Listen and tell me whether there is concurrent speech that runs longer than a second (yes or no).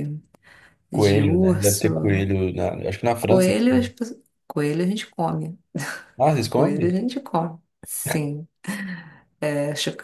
yes